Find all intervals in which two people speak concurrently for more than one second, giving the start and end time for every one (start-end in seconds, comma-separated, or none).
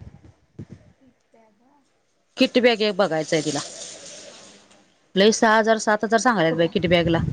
none